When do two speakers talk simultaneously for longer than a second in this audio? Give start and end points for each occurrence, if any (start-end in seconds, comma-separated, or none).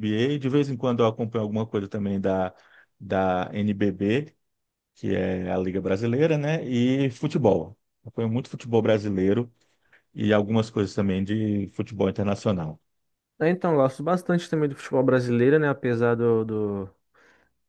none